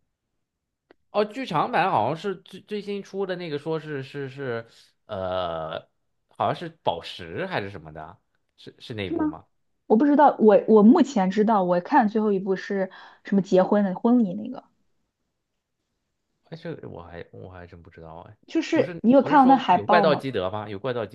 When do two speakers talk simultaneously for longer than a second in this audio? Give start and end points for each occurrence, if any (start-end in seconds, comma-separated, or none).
18.7-20.2